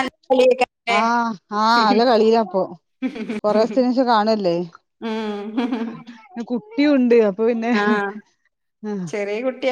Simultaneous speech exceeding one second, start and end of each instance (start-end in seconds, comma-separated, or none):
none